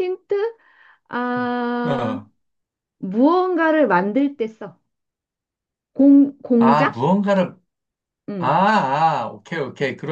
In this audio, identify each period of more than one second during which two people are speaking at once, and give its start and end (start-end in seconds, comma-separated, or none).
none